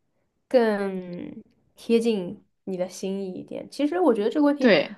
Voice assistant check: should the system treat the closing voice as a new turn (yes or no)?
no